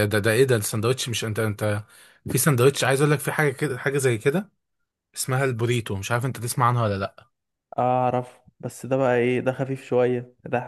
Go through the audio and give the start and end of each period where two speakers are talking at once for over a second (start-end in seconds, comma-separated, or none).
none